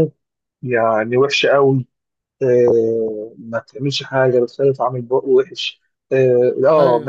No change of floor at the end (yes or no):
yes